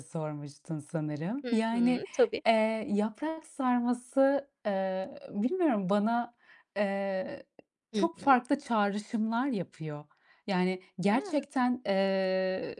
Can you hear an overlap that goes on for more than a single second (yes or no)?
no